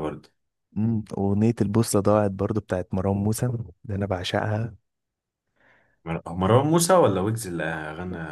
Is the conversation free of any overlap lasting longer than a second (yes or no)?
yes